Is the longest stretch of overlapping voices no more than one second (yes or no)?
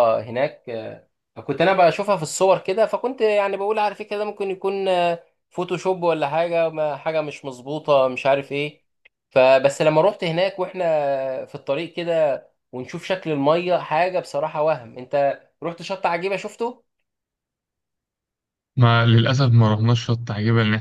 yes